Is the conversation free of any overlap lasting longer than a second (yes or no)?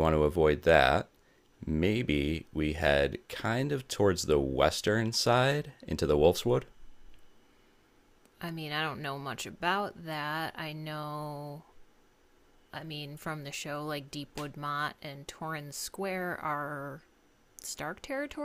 yes